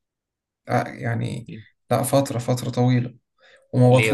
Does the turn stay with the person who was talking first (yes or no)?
yes